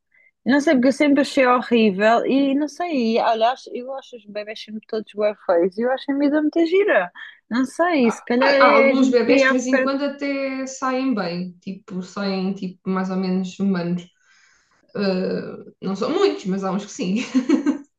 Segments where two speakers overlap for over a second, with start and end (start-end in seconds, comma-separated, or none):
8.4-9.9